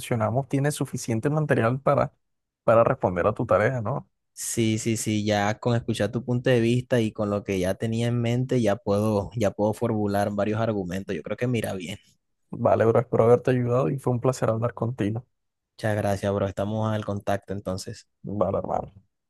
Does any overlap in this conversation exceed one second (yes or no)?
no